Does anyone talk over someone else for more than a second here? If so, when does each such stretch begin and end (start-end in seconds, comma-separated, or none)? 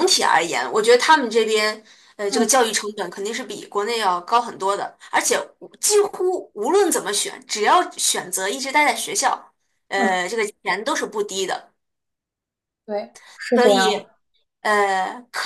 none